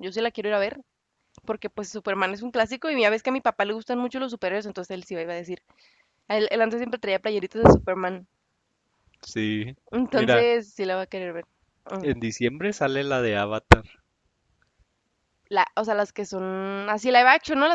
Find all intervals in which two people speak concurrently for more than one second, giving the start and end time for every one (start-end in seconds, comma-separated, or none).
none